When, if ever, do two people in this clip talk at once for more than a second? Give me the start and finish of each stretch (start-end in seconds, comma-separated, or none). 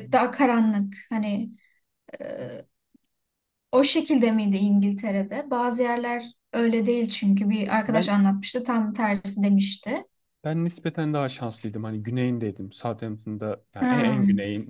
none